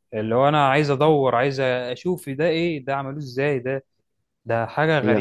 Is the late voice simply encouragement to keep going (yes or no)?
no